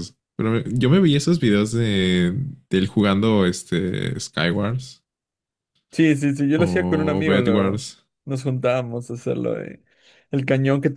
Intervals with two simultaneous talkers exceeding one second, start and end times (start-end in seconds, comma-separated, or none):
6.6-7.8